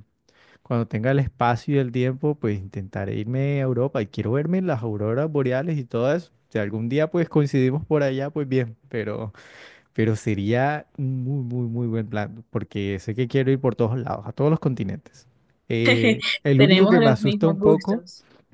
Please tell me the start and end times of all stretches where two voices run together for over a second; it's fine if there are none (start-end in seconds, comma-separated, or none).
16.6-18.0